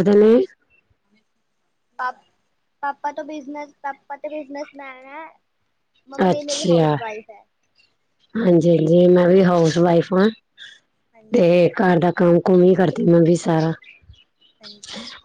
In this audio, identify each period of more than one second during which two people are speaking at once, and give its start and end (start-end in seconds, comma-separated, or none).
none